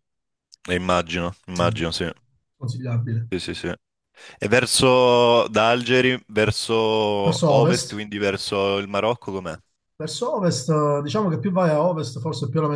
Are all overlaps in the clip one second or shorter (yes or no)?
yes